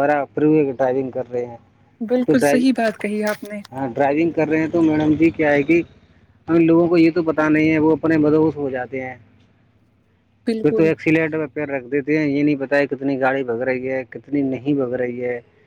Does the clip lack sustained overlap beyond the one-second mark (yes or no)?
yes